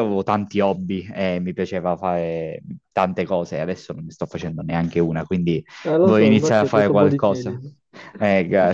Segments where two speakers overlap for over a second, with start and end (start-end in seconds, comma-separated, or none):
6.0-7.6